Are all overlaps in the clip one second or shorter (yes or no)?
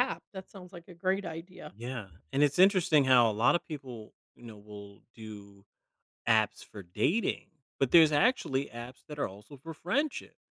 yes